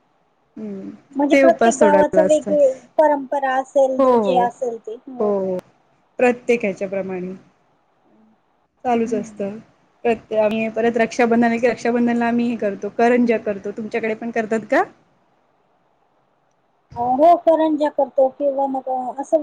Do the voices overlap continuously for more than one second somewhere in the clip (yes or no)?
yes